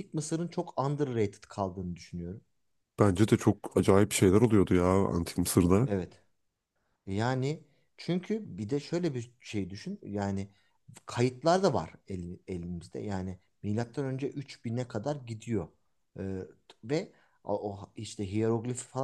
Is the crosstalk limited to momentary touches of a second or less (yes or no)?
yes